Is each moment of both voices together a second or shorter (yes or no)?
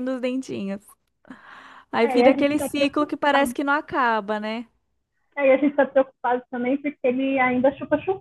no